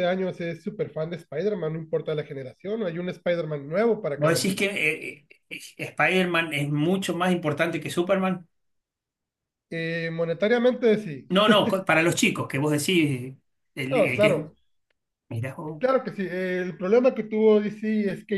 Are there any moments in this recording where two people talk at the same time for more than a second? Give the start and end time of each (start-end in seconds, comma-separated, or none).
none